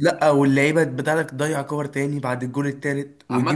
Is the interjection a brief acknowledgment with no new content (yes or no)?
no